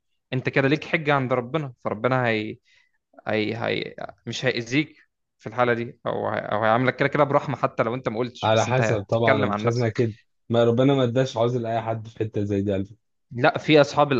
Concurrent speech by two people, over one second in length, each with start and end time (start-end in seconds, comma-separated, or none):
8.4-10.0